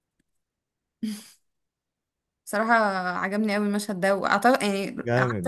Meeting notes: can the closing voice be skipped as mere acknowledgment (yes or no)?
no